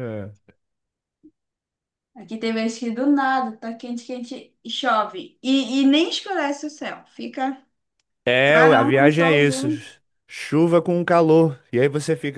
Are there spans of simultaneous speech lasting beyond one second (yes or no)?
yes